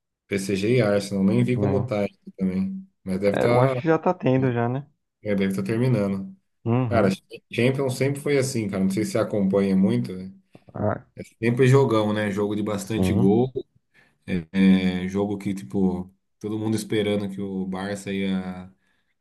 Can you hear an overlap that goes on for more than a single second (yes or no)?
no